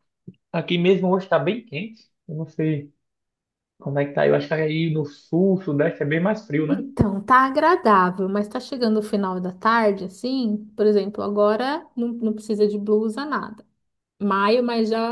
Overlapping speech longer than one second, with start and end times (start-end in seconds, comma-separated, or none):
none